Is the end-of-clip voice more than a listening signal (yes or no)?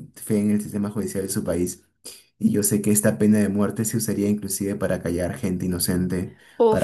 no